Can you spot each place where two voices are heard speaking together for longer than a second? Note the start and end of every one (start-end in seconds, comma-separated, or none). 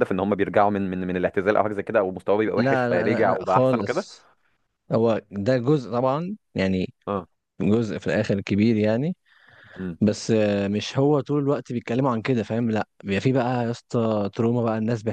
2.6-4.1